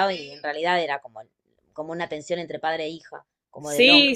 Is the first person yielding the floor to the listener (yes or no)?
yes